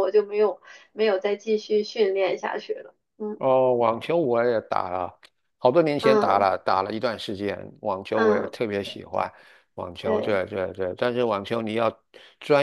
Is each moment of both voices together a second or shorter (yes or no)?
yes